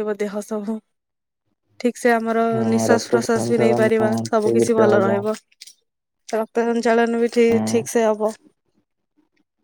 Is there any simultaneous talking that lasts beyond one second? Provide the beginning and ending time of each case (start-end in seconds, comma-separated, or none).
2.5-5.2